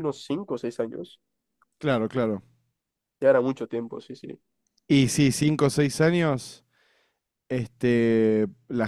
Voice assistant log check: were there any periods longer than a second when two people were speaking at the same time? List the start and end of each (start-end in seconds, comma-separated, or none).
none